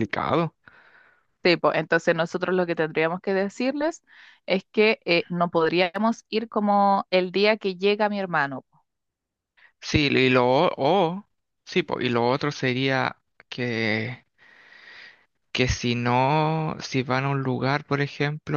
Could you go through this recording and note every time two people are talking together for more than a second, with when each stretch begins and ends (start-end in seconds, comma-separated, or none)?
none